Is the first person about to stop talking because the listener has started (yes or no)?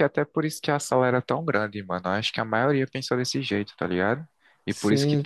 no